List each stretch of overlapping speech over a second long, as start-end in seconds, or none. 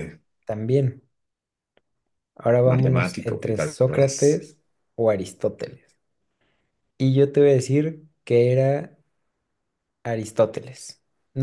2.7-4.2